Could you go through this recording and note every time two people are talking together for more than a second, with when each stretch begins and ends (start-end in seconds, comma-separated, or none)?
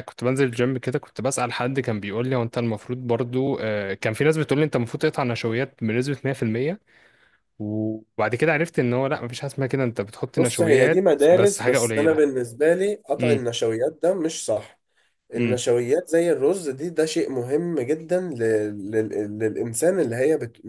10.4-12.2